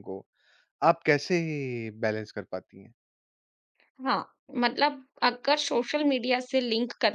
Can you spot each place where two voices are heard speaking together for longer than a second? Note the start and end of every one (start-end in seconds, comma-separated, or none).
none